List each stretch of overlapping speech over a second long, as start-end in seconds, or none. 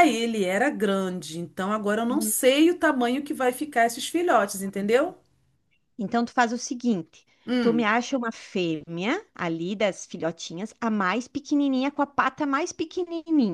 none